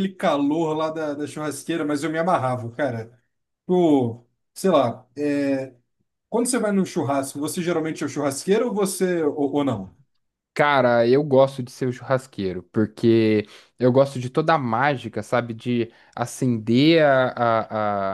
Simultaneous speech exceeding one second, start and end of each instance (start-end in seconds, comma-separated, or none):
none